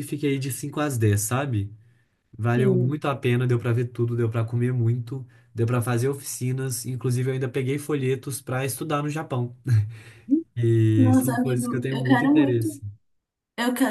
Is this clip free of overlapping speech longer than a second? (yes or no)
no